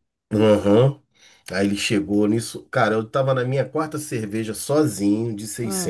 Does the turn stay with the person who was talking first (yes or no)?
yes